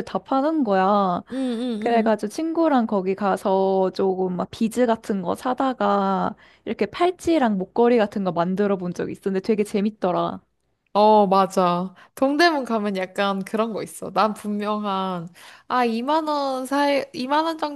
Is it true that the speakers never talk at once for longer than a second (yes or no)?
yes